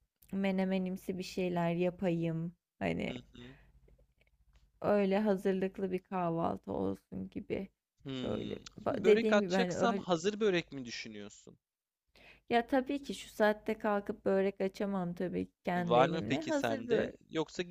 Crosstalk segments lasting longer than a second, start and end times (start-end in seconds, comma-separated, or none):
8.2-10.1, 15.8-17.1